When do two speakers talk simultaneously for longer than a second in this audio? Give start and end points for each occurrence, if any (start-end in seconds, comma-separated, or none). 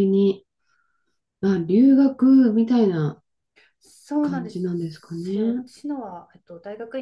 4.2-5.7